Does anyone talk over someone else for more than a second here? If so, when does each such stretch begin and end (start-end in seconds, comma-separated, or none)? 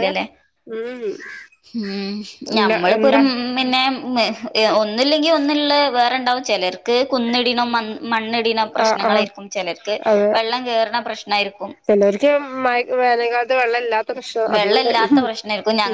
none